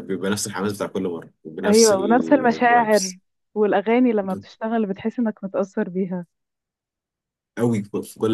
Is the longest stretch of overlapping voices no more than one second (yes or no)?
no